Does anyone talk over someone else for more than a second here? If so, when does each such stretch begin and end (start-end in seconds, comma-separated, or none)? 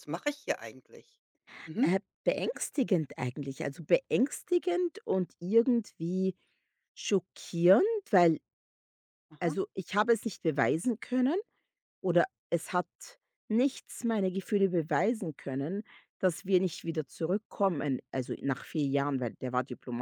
none